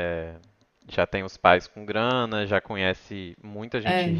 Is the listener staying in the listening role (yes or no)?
yes